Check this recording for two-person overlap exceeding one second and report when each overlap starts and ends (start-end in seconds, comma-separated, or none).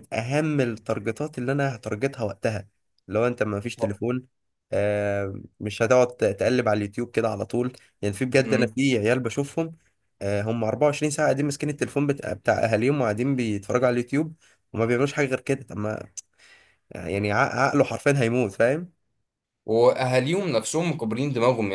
none